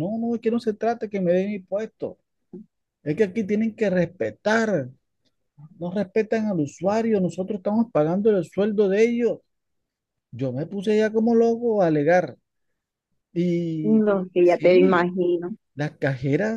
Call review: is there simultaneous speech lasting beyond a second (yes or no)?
yes